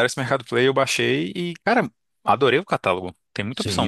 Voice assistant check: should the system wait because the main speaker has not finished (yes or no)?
no